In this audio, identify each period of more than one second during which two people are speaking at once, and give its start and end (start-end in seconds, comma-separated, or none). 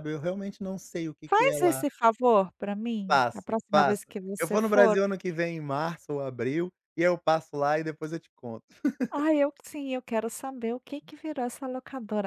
3.1-5.0